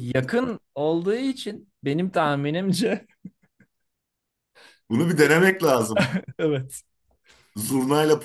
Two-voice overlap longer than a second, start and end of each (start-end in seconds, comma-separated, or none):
none